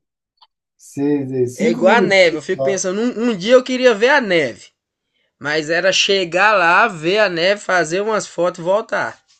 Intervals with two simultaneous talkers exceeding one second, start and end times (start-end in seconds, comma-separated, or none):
1.6-2.8